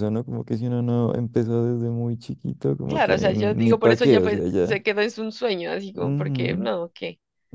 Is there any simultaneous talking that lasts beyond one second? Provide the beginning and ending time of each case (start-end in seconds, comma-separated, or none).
2.9-4.8